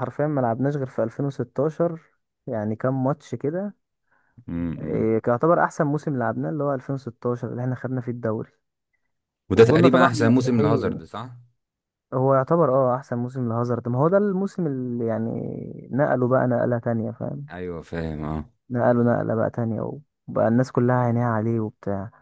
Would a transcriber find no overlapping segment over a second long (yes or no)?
no